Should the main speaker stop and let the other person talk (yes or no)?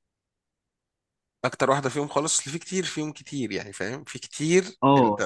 yes